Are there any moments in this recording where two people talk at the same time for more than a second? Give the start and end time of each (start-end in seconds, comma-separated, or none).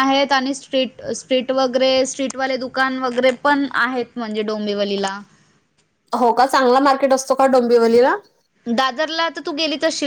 none